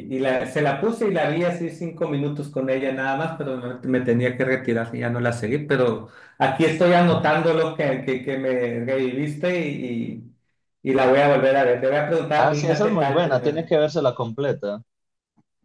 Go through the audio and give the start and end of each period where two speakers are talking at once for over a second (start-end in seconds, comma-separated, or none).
12.4-13.7